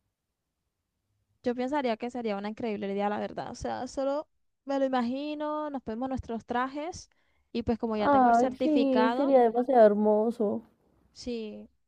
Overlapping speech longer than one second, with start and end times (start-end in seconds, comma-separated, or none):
8.0-9.3